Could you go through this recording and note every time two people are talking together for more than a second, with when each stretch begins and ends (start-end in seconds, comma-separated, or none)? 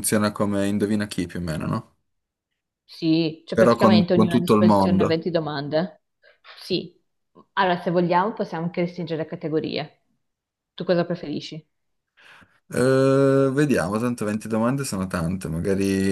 3.5-5.2